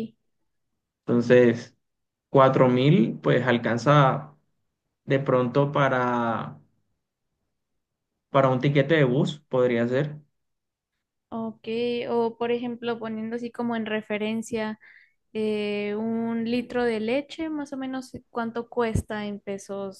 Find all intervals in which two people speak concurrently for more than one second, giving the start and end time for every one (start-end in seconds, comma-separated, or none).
none